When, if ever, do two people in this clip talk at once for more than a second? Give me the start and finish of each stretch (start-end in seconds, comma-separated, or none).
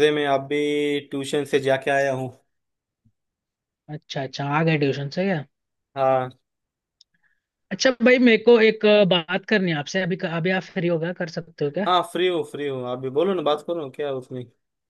none